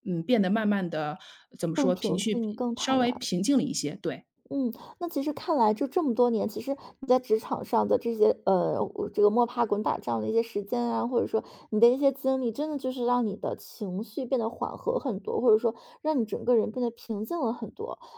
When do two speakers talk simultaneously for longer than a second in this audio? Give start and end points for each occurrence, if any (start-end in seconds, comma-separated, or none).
1.7-3.3